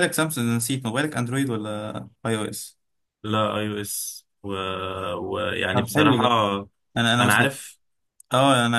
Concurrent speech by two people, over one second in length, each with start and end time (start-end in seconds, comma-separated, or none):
none